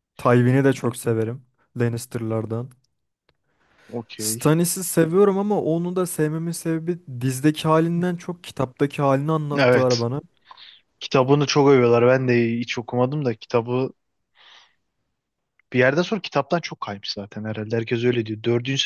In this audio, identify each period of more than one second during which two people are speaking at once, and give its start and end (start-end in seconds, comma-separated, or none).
none